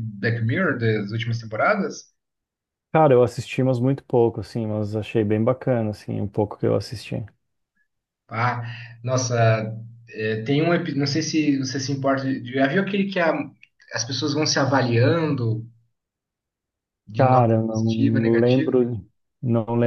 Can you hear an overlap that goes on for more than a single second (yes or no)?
yes